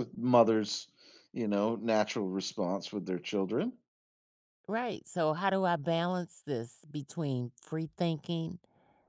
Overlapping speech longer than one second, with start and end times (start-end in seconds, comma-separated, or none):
none